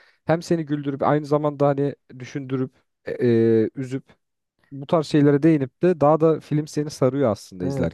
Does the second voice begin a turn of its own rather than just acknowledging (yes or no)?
yes